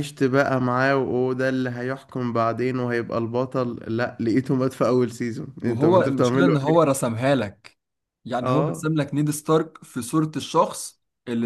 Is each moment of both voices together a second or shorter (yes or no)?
no